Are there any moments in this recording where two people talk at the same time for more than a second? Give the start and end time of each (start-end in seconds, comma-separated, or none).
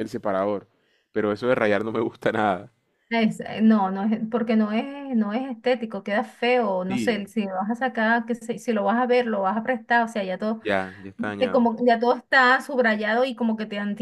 none